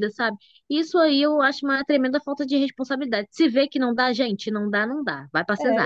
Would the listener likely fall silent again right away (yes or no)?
no